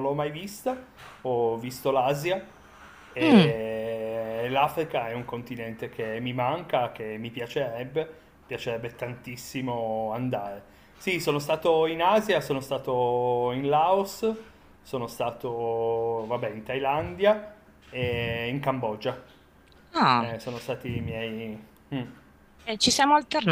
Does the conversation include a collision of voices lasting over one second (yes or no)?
no